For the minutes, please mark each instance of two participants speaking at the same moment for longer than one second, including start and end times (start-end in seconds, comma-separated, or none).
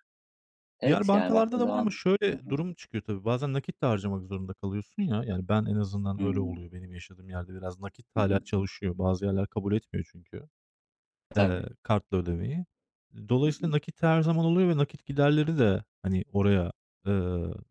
0.8-2.5